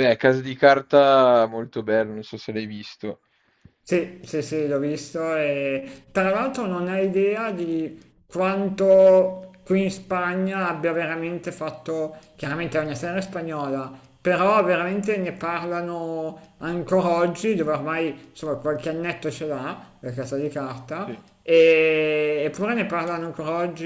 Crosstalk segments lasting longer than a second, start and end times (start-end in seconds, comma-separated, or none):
none